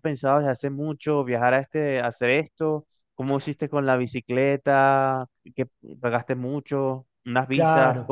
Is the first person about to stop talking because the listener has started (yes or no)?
yes